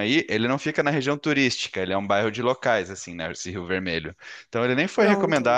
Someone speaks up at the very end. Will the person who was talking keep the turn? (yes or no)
yes